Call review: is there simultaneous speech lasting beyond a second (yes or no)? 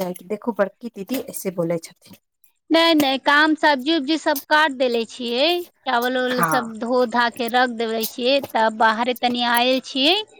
no